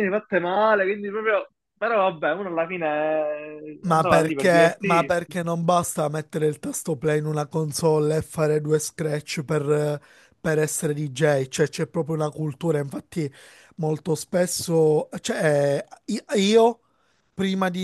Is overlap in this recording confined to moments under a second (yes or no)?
no